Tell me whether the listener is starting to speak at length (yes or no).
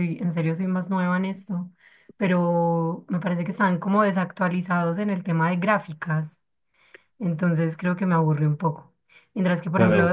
yes